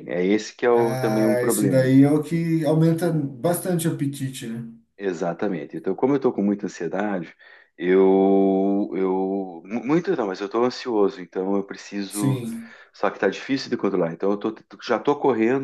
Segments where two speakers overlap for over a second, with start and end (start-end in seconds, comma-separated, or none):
0.7-1.9